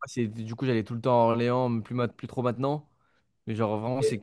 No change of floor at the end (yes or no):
yes